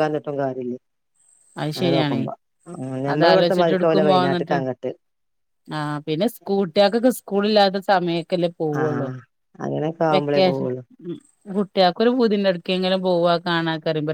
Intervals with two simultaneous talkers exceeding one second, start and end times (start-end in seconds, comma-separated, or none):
3.1-4.6